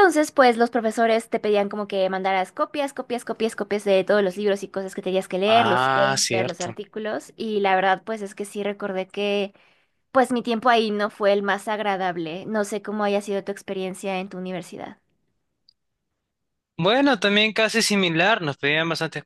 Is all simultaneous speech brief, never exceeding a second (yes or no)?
no